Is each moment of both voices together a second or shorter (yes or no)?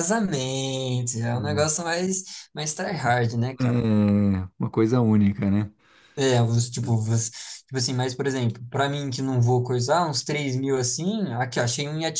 yes